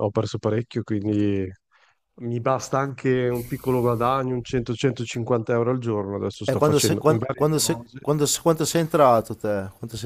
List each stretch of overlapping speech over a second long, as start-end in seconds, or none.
6.5-8.0